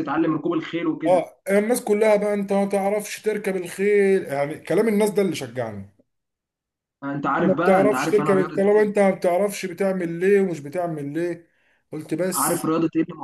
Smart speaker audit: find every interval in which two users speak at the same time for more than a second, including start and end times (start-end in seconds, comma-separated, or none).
7.2-8.9